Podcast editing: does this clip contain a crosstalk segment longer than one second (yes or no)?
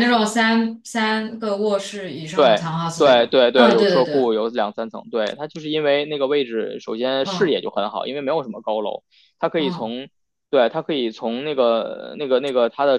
yes